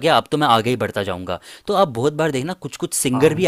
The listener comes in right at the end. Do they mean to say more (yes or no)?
no